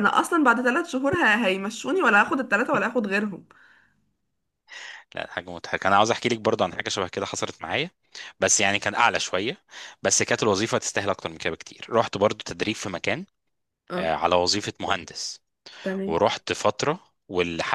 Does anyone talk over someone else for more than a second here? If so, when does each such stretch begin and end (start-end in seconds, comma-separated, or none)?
none